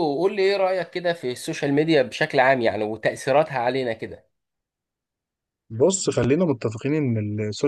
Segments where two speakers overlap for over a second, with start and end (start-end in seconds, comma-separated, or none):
none